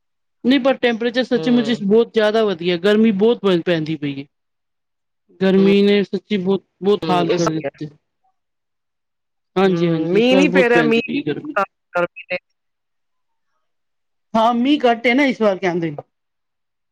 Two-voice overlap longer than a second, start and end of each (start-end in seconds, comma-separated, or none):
9.7-11.5